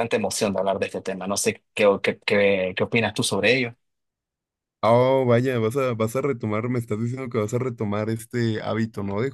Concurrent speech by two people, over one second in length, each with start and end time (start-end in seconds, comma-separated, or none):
none